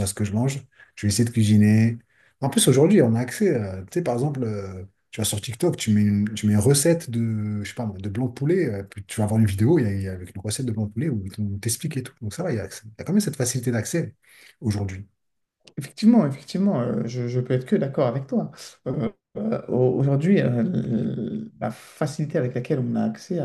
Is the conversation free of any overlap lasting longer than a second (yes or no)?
yes